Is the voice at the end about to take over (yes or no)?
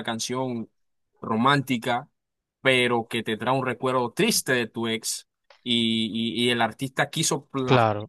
no